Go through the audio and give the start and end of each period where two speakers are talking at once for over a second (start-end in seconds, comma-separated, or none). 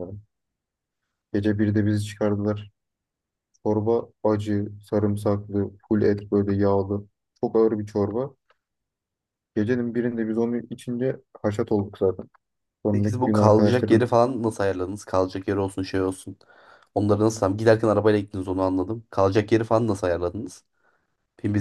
12.9-14.2